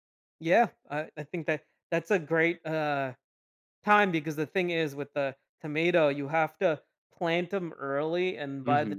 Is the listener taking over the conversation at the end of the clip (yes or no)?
no